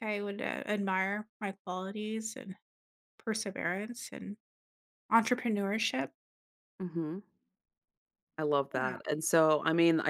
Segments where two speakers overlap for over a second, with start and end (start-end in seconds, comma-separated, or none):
none